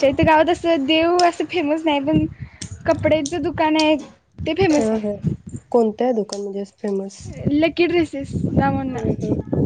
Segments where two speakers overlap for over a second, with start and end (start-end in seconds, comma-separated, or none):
none